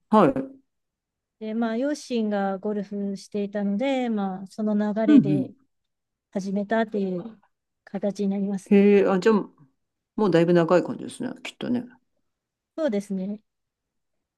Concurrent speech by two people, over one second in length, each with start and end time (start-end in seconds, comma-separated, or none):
none